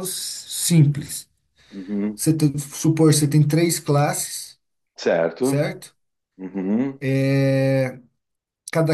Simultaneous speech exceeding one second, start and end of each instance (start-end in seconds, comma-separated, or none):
none